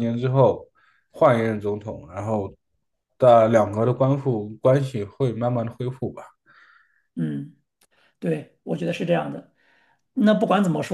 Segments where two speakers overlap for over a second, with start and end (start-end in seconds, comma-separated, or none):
none